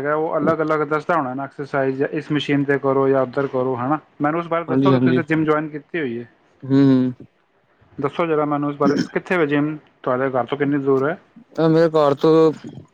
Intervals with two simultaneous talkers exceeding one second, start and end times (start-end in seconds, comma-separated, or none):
none